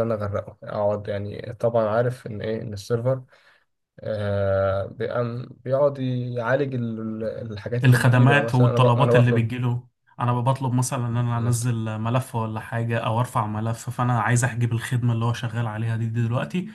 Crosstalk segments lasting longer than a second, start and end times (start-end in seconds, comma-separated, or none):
7.8-9.5